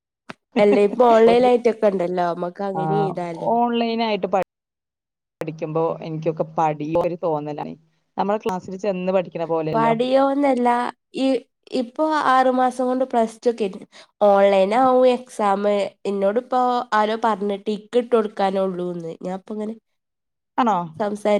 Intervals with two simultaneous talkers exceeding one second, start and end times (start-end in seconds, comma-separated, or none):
none